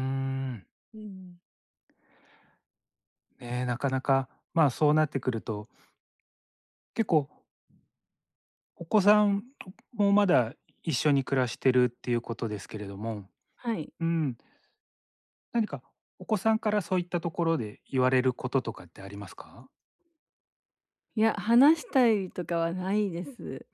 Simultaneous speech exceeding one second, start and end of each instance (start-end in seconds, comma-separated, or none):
none